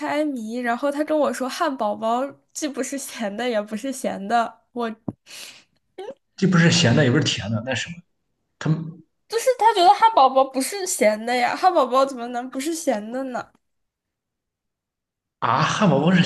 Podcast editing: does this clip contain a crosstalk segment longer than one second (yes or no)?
no